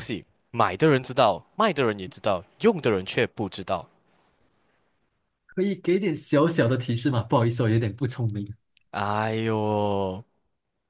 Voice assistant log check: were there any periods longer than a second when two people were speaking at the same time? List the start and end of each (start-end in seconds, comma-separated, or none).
none